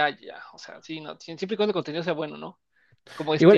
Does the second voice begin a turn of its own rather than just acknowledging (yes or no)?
yes